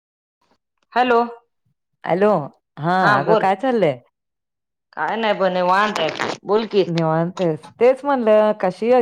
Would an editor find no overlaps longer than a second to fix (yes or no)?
yes